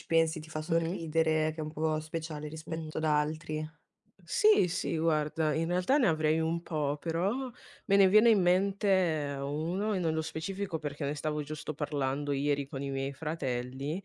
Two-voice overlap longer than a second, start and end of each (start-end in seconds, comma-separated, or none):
none